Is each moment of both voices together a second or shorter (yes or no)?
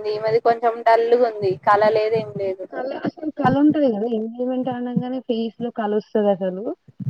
yes